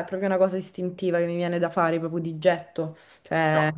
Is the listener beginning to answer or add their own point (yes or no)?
no